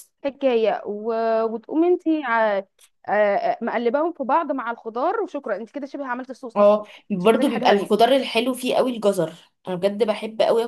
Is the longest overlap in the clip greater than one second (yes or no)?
yes